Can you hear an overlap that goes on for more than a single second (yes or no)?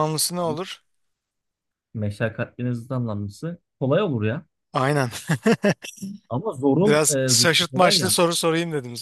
yes